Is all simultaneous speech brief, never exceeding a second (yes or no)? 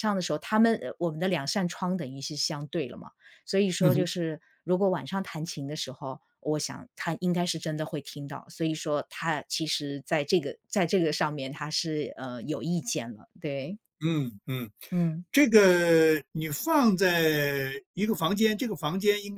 yes